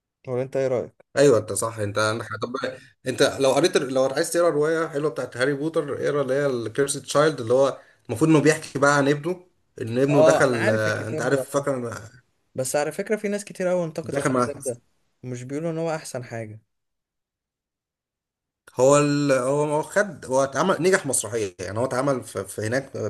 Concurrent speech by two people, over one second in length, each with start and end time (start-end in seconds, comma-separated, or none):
10.1-11.7